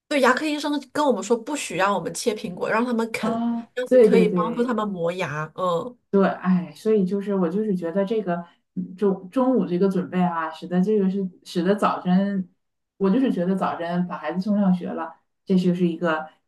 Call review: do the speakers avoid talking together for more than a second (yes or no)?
no